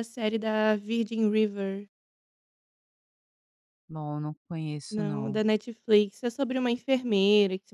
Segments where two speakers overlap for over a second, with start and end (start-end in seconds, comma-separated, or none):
none